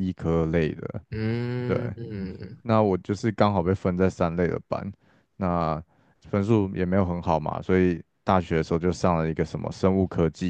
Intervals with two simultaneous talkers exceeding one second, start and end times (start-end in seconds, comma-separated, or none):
none